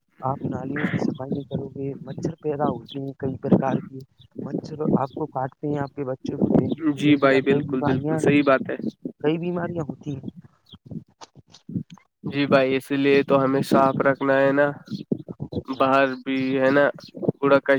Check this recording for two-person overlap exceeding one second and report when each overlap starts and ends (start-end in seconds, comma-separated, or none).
6.7-8.2